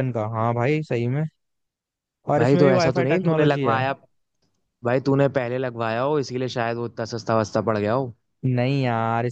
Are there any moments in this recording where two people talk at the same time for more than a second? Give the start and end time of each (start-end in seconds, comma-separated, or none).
2.4-3.8